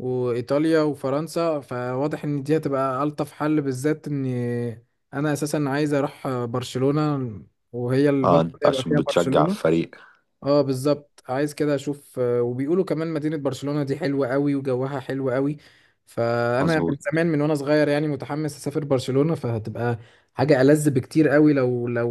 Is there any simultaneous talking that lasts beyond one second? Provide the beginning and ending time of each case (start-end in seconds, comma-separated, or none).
8.2-9.6